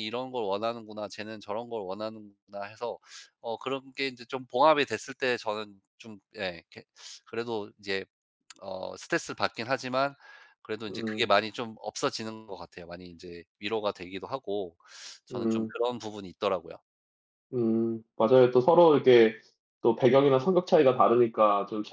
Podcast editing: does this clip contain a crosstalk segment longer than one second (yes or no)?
no